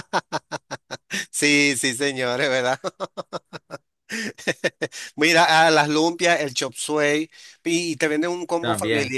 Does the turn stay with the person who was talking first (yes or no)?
yes